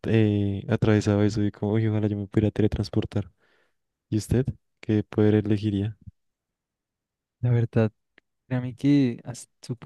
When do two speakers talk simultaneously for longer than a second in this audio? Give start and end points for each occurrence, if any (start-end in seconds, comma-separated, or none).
none